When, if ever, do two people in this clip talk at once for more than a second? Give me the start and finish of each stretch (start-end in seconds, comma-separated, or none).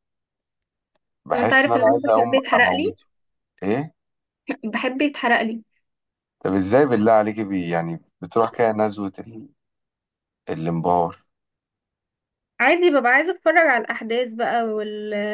1.3-3.0